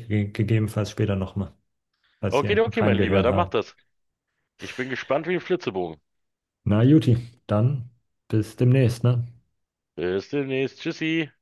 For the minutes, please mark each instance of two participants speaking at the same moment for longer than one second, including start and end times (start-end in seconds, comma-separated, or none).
2.3-3.5